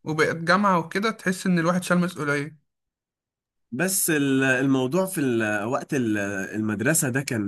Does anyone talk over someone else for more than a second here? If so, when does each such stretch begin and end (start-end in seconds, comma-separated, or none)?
none